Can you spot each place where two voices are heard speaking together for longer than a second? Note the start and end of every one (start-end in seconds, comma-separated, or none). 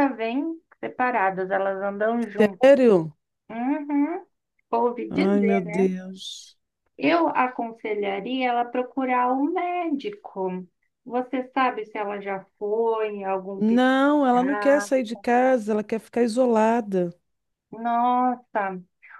13.6-14.9